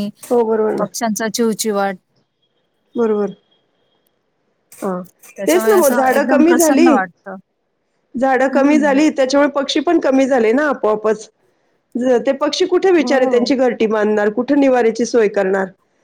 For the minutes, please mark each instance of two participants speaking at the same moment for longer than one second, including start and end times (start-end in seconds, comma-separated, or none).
5.5-6.9